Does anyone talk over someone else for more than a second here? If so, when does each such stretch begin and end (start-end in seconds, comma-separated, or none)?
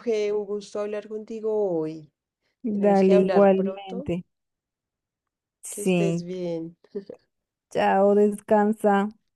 2.8-4.1